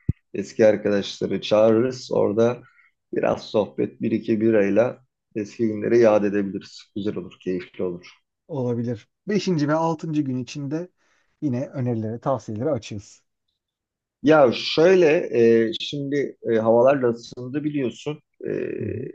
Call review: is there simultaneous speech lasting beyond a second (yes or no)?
no